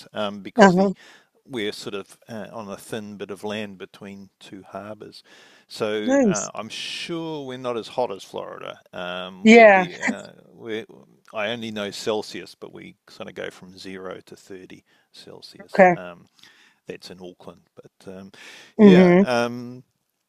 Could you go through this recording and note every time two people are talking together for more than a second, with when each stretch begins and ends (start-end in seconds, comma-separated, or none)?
none